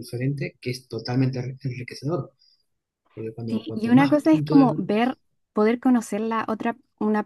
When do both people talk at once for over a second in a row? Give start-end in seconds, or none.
3.5-4.8